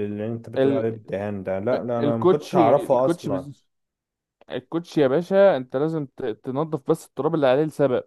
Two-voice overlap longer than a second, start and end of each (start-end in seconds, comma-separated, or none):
2.0-3.5